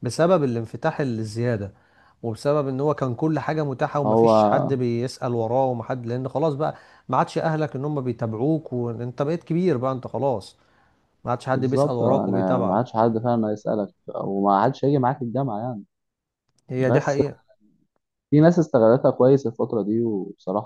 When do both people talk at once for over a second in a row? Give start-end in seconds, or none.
11.5-12.8